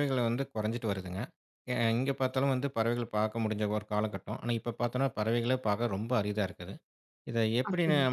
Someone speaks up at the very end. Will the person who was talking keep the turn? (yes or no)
yes